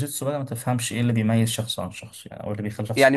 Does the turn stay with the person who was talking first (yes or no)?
no